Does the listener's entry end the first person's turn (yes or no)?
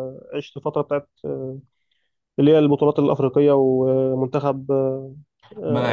yes